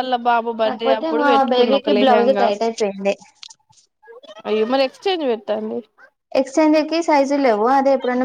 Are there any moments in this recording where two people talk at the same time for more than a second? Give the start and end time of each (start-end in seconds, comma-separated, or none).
0.7-2.5